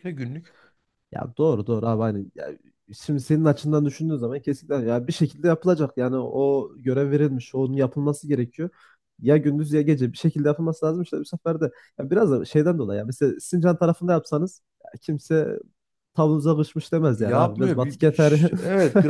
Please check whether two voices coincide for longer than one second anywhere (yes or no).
yes